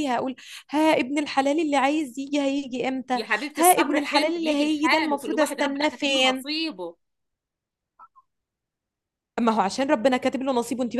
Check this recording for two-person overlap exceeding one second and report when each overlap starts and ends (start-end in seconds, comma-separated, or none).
3.1-6.5